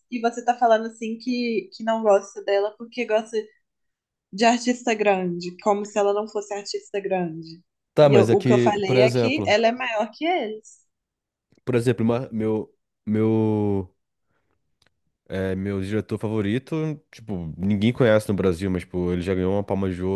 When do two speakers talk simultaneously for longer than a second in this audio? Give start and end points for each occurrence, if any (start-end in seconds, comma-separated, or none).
8.0-9.6